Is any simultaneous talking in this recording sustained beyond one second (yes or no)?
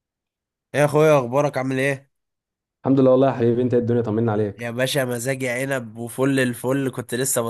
no